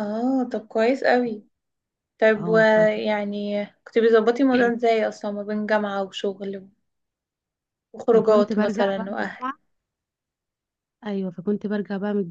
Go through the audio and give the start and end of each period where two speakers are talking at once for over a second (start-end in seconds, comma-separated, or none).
8.1-9.4